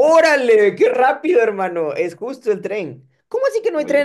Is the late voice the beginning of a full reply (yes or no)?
no